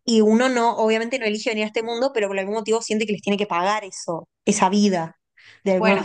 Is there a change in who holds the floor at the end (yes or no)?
yes